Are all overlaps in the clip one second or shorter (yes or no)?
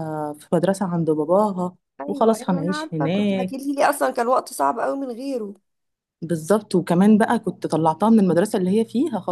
no